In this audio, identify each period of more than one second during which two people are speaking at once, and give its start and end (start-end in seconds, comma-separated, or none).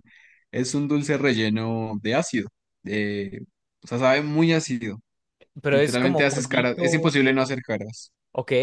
5.7-7.6